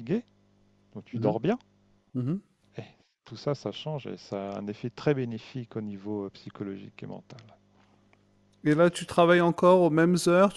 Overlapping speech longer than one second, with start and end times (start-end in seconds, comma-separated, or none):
none